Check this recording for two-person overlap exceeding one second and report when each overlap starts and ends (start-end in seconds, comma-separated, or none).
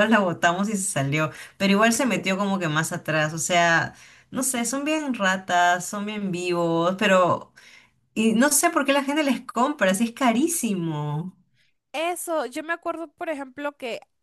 none